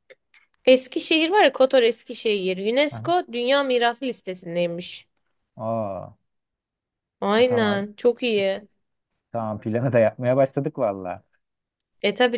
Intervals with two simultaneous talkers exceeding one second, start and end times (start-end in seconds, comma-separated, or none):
none